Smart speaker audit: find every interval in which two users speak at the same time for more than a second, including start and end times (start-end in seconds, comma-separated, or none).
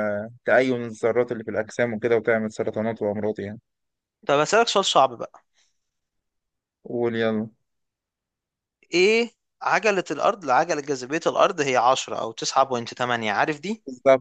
none